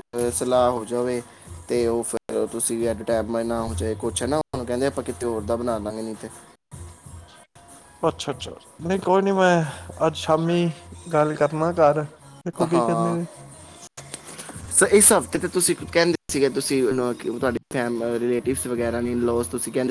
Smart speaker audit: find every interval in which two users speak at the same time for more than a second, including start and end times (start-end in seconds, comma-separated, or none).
none